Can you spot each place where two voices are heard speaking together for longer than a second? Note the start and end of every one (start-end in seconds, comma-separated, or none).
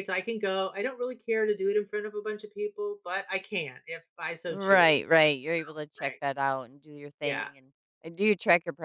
none